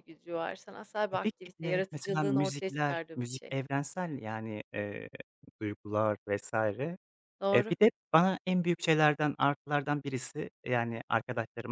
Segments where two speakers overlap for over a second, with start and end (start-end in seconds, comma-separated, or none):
1.1-3.5